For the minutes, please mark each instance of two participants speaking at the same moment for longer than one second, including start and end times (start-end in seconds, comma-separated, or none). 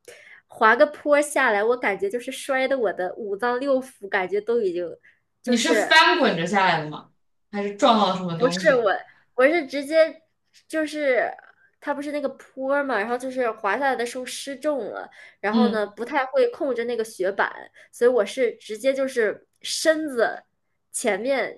none